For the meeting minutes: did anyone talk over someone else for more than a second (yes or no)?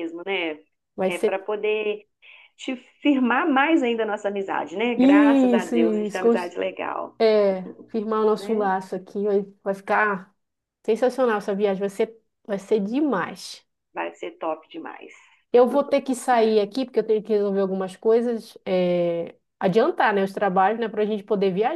yes